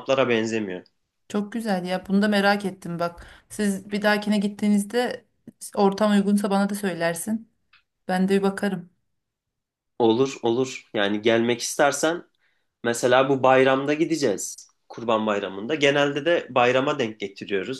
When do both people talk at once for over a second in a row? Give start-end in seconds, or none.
none